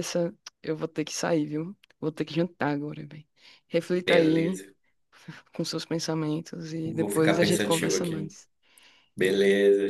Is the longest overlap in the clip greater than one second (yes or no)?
yes